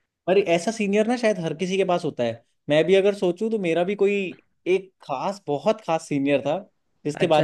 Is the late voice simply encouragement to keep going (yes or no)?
yes